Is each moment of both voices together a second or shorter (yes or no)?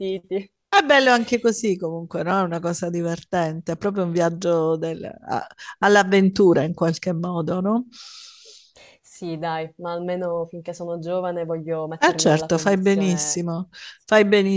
no